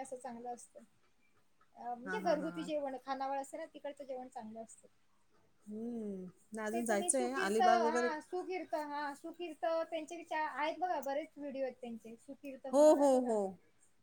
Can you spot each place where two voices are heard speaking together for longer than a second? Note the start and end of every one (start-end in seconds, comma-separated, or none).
6.7-8.1